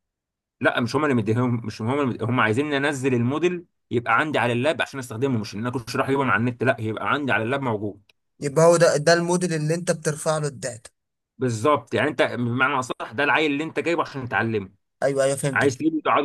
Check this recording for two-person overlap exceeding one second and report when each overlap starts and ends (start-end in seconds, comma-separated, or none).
none